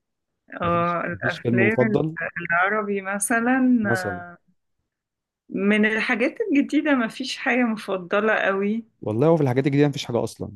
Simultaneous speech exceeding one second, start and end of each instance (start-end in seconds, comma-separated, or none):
0.6-1.9